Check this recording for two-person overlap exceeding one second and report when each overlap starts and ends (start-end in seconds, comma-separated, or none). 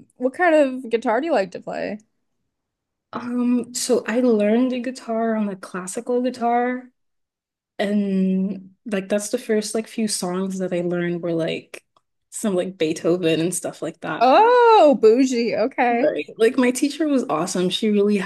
none